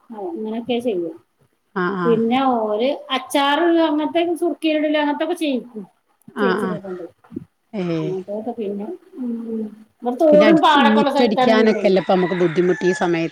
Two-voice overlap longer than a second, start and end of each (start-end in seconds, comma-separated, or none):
10.3-11.8